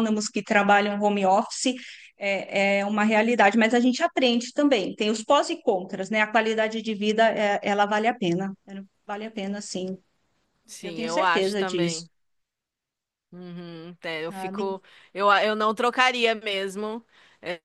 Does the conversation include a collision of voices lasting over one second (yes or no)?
yes